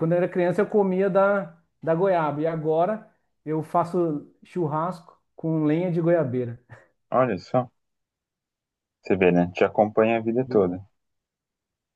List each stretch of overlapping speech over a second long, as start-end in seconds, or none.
none